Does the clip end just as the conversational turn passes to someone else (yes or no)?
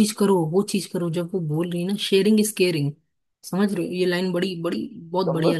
no